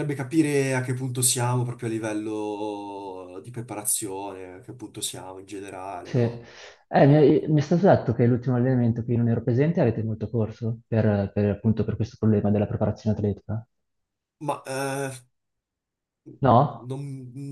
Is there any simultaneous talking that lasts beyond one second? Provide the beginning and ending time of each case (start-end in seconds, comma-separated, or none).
none